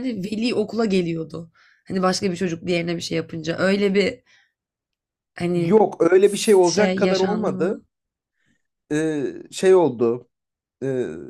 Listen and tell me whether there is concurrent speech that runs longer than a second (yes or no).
yes